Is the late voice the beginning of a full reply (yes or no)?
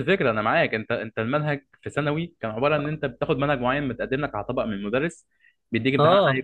no